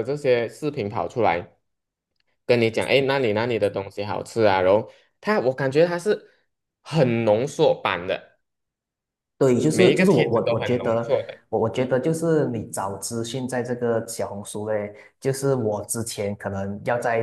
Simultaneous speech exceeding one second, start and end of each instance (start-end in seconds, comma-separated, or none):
9.7-11.1